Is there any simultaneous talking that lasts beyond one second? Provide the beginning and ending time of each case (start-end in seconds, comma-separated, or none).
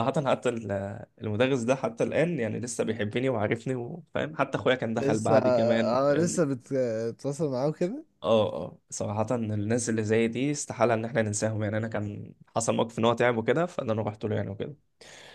4.9-6.4